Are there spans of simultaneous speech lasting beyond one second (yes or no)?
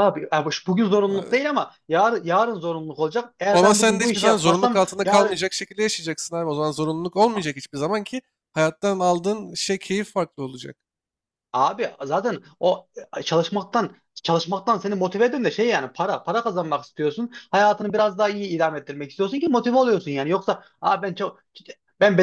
yes